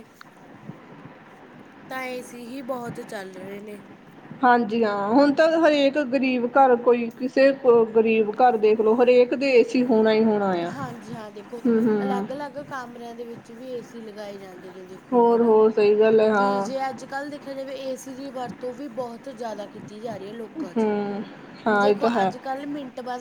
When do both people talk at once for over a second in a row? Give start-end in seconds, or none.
none